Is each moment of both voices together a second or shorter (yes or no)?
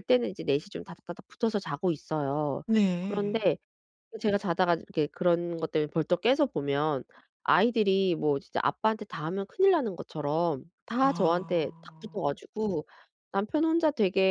no